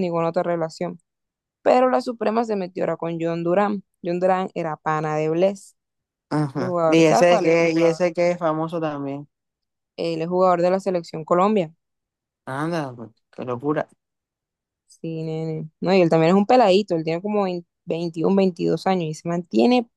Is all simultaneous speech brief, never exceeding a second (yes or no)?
no